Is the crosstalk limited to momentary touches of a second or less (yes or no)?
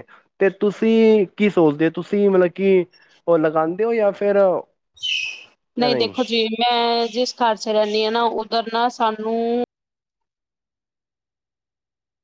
yes